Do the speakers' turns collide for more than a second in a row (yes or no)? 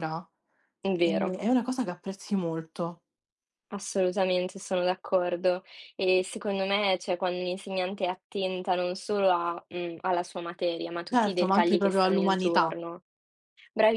yes